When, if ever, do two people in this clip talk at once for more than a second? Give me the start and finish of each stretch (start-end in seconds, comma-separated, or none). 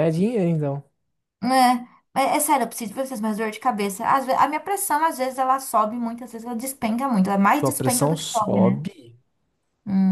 7.4-8.8